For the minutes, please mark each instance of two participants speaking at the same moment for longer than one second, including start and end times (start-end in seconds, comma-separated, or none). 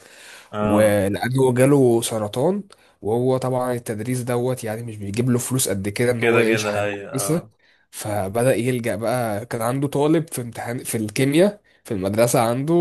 6.2-7.5